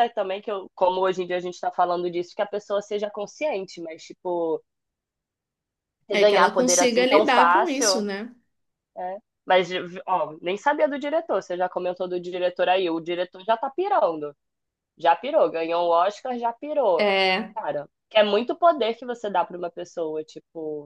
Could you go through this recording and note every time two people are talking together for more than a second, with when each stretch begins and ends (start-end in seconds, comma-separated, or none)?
6.1-8.1